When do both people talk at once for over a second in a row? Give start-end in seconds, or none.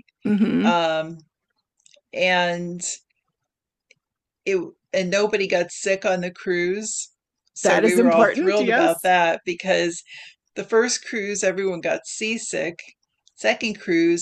7.6-9.1